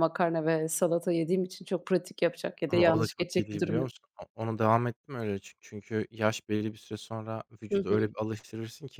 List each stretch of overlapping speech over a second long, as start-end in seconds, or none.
2.7-3.9